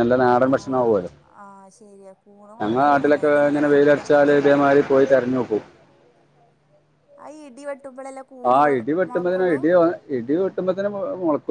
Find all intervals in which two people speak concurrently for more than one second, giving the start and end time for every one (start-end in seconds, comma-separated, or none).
2.6-4.3